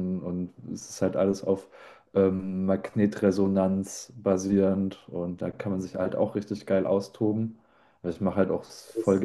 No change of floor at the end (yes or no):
yes